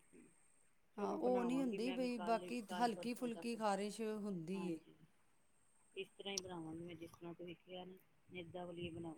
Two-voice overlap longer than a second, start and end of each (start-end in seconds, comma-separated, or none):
1.0-3.6